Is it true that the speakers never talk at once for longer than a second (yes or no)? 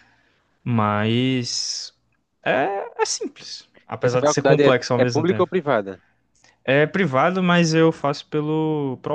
no